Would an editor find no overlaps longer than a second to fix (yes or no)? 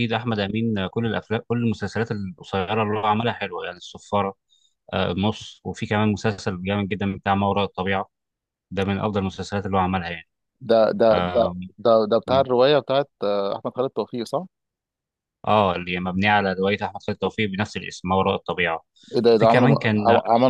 yes